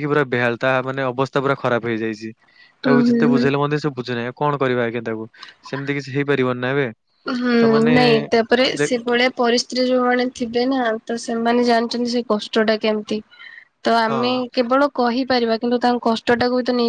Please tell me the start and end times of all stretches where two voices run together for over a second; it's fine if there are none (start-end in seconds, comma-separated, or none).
none